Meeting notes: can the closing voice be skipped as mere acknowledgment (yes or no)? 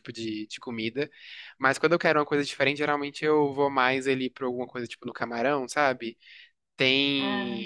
yes